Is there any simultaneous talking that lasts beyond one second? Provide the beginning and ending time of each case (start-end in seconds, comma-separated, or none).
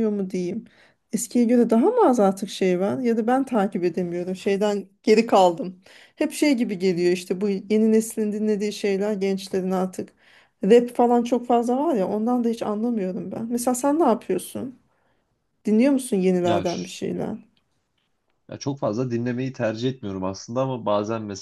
none